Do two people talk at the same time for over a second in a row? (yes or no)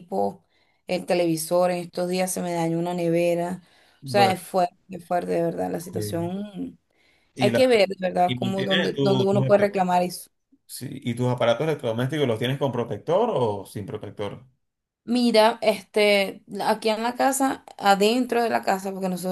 yes